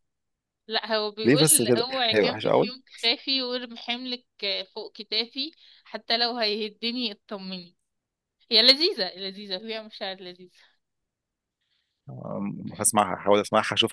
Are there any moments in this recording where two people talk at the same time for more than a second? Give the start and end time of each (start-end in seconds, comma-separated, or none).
1.2-2.7